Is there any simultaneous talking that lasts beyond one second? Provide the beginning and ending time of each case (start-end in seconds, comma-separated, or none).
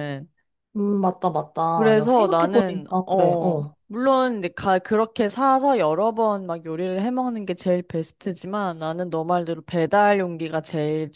1.7-3.7